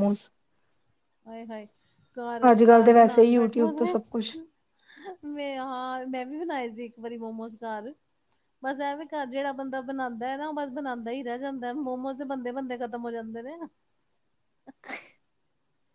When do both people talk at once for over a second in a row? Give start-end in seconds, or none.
2.5-4.3